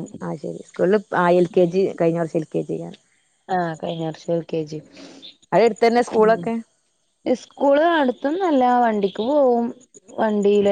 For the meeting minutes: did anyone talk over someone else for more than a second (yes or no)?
no